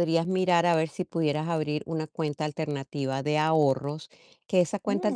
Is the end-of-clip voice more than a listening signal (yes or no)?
no